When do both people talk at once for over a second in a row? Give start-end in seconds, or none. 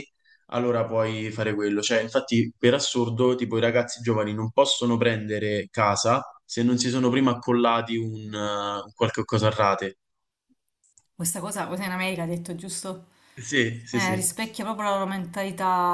none